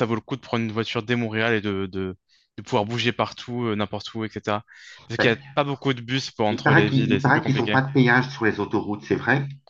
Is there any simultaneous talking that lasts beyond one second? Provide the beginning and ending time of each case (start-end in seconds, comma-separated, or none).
6.5-7.8